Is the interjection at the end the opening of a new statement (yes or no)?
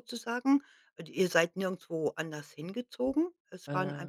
no